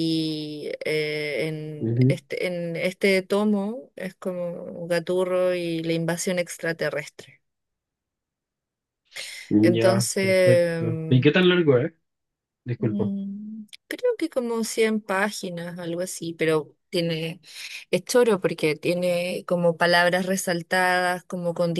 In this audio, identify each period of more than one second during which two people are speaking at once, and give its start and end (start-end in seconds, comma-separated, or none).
9.6-11.2